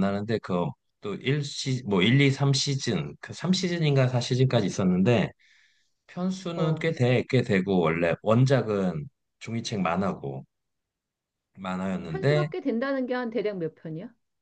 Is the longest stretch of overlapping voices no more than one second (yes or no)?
yes